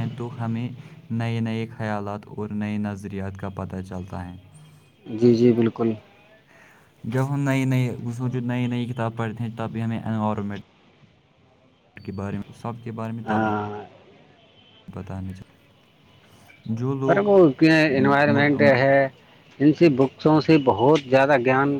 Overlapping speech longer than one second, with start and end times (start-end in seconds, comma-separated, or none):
17.1-18.8